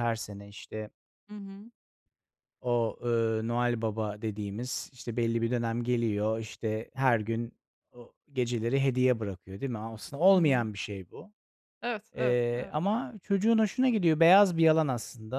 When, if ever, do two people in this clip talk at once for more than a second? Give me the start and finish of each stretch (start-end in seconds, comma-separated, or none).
none